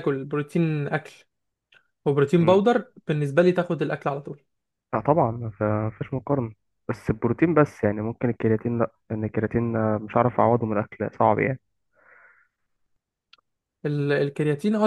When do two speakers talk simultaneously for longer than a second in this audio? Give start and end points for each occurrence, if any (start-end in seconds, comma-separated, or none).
none